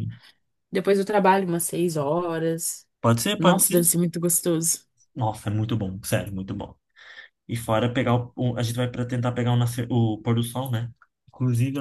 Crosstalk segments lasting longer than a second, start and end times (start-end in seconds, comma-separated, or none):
none